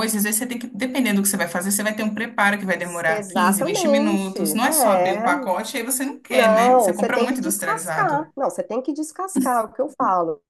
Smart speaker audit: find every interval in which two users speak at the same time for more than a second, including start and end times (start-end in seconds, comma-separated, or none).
3.1-5.2, 6.3-8.3